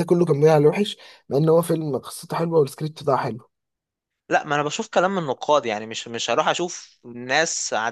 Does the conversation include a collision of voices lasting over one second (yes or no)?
no